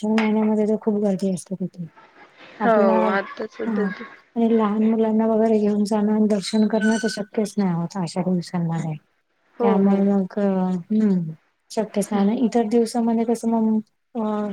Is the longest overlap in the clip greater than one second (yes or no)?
no